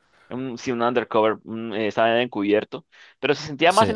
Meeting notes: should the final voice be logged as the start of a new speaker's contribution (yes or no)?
no